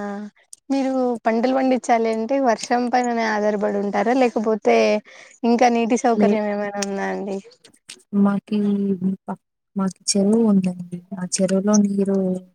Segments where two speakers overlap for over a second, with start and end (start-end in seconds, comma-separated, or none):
none